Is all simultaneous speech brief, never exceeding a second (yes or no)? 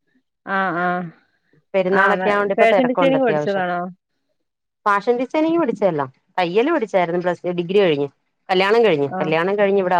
no